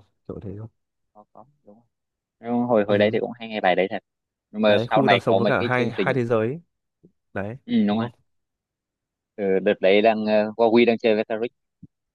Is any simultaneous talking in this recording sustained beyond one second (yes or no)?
yes